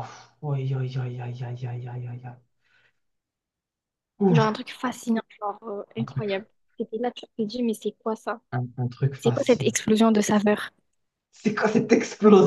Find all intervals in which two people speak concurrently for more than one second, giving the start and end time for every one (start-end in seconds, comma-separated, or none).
none